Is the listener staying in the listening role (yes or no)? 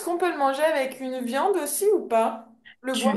no